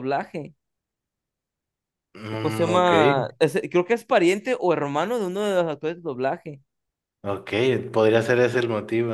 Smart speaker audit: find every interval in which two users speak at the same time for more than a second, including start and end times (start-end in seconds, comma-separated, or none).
none